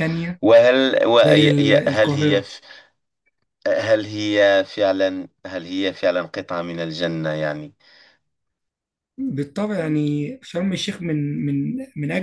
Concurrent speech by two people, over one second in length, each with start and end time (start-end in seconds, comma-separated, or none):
1.2-2.5